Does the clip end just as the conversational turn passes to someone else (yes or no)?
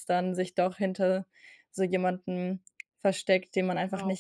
yes